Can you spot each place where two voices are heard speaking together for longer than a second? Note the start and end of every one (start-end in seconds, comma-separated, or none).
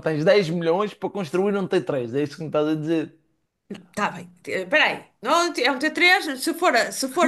none